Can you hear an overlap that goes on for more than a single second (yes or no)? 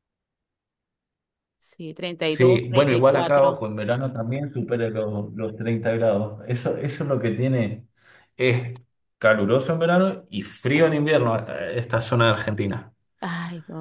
yes